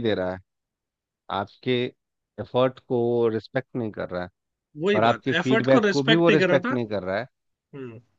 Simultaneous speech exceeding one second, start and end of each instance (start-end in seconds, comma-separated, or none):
5.0-6.8